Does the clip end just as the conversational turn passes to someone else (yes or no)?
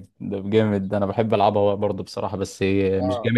yes